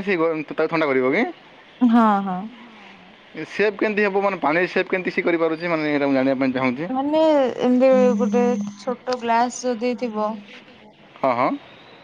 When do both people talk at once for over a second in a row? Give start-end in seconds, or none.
none